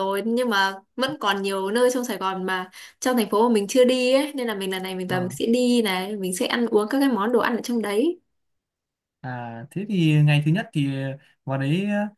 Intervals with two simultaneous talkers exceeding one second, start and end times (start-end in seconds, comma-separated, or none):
none